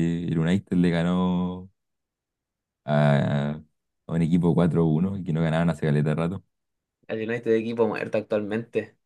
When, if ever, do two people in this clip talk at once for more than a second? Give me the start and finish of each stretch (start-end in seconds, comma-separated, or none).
none